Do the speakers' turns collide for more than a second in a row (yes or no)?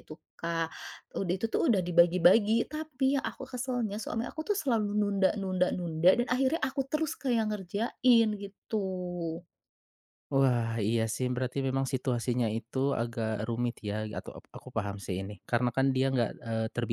no